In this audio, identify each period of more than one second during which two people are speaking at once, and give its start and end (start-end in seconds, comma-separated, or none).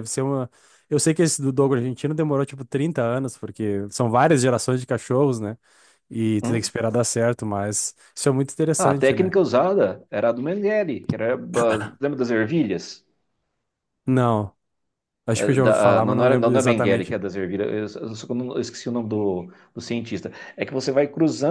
15.3-17.1